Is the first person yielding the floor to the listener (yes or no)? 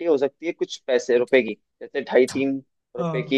no